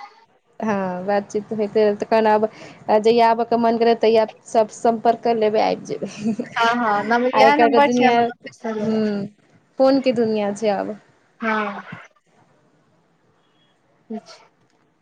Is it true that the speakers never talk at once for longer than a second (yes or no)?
no